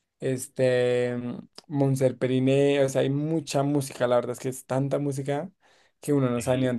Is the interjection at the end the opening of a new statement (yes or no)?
yes